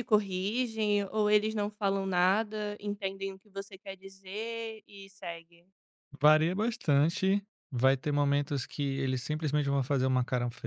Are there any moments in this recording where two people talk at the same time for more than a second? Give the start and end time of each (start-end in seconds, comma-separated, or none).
none